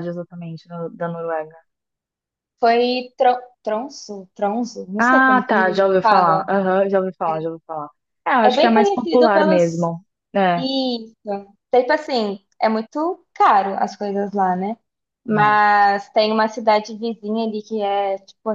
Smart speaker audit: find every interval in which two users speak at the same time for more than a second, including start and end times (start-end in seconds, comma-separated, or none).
5.0-6.5, 8.4-9.9